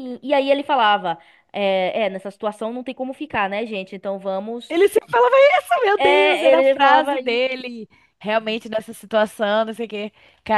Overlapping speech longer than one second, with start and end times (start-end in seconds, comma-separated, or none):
6.0-7.7